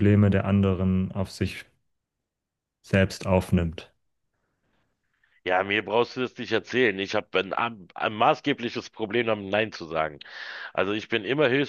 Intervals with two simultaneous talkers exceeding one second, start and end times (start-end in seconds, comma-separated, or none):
none